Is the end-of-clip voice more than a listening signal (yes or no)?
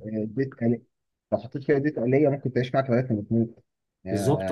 no